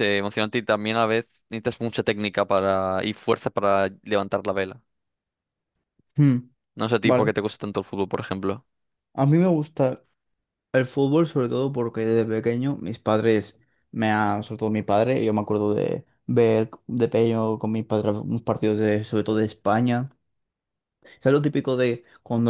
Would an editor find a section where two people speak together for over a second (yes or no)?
no